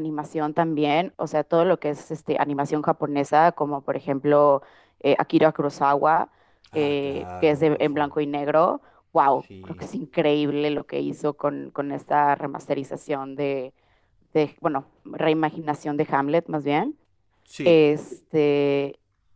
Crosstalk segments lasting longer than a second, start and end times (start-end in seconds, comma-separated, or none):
6.7-8.1